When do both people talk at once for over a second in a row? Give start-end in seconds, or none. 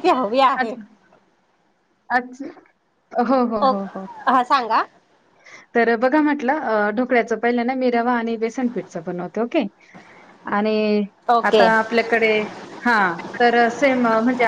none